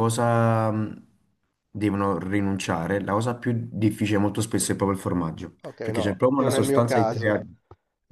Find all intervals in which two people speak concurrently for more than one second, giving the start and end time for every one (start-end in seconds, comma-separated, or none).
5.6-7.4